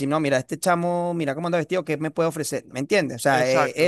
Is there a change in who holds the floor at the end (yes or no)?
no